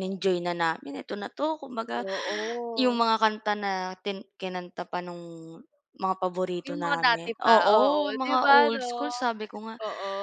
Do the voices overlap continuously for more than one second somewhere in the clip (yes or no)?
yes